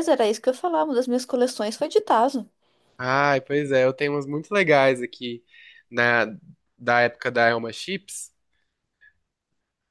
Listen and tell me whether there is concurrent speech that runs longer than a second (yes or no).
no